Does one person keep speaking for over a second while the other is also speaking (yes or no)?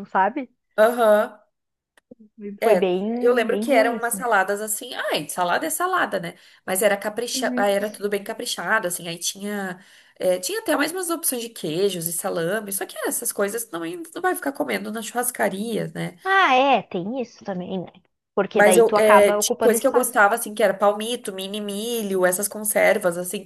yes